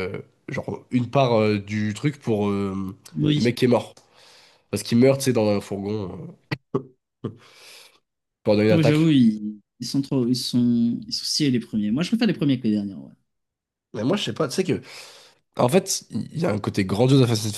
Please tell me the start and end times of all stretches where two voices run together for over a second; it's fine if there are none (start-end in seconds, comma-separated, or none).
none